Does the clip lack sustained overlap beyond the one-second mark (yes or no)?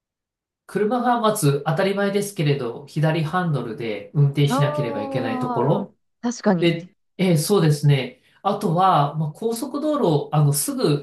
no